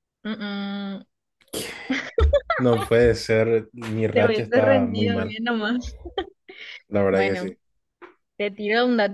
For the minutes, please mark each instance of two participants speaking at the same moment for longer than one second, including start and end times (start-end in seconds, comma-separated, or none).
4.1-5.3